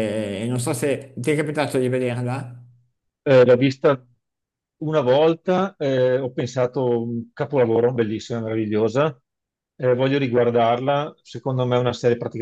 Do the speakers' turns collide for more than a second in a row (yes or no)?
no